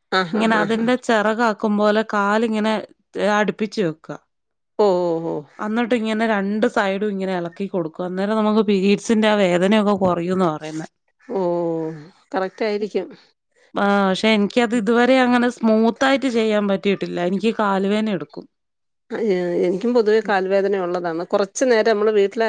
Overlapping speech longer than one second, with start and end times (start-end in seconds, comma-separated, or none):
none